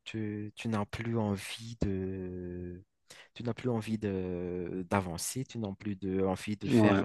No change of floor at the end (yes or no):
yes